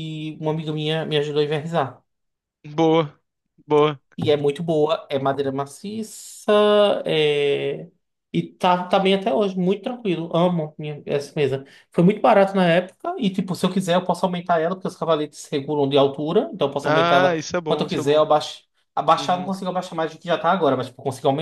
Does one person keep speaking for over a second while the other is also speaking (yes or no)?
yes